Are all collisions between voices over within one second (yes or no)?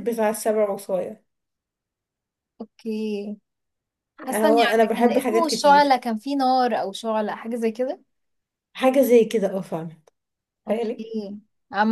no